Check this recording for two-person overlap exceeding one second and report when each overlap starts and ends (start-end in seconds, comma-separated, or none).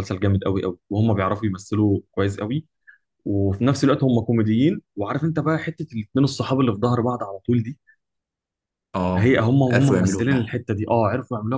9.2-10.6